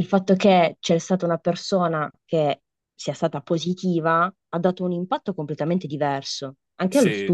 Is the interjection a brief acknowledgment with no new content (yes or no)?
no